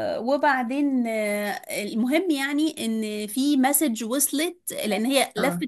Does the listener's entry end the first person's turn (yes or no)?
no